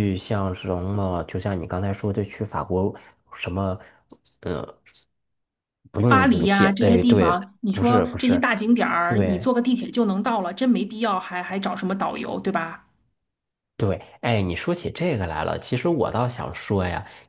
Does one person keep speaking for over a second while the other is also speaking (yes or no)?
yes